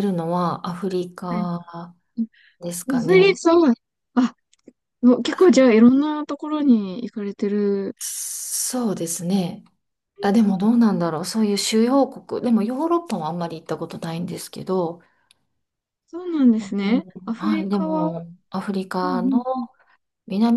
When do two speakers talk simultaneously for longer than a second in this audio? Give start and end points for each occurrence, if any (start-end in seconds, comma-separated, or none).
16.6-18.2